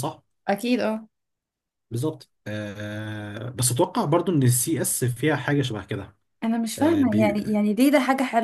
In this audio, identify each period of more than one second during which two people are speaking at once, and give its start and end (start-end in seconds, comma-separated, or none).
none